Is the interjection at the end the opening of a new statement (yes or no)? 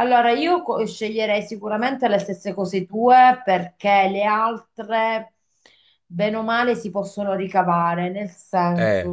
no